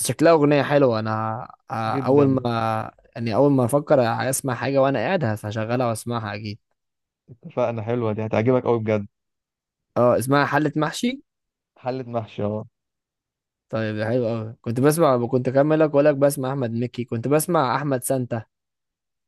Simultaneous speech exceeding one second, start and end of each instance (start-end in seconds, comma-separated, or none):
none